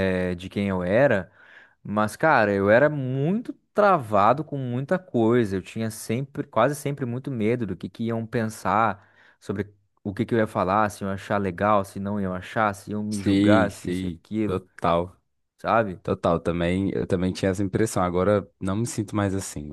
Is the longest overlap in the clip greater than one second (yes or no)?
yes